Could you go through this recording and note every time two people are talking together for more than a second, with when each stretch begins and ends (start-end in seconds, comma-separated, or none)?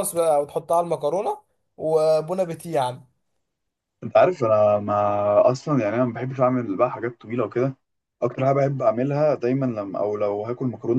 none